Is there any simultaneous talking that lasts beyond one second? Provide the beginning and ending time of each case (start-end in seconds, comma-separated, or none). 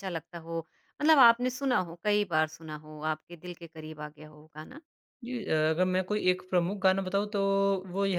none